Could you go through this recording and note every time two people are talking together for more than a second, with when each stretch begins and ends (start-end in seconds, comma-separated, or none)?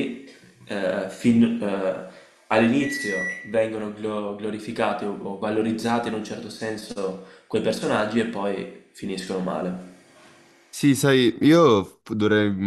none